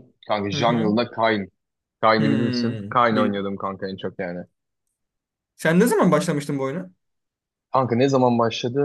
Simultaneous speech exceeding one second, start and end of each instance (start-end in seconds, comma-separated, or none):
2.2-3.5